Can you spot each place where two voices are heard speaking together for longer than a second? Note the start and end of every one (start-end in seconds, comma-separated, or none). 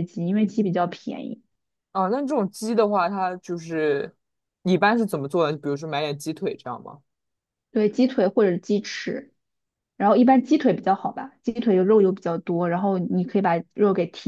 none